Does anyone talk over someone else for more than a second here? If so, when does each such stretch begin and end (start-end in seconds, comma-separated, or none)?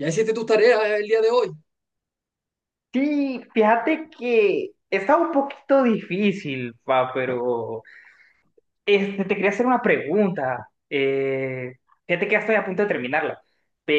none